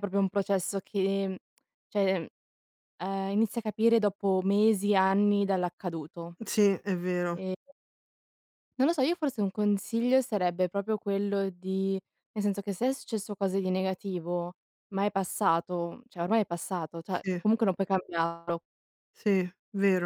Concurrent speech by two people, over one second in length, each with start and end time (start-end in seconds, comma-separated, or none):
none